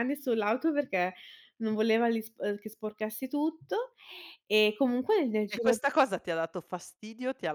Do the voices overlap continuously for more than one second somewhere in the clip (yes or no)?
no